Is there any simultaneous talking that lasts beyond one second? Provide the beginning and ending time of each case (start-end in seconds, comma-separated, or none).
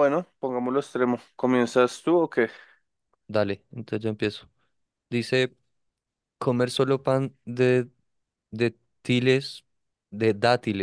none